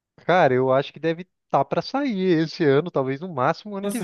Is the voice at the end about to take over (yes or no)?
yes